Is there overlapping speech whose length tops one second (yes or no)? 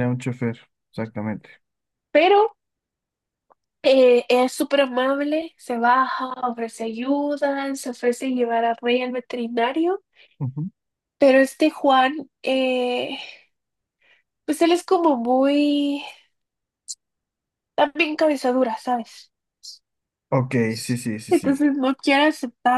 no